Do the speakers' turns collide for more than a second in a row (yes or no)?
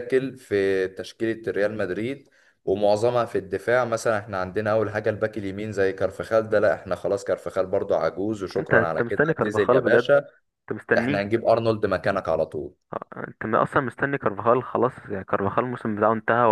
yes